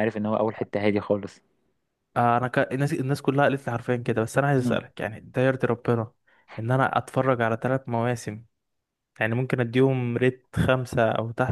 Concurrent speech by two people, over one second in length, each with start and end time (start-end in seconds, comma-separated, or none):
none